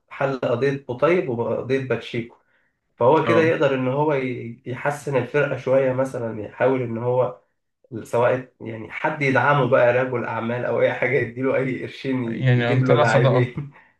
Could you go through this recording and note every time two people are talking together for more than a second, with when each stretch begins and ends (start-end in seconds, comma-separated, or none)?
12.2-13.5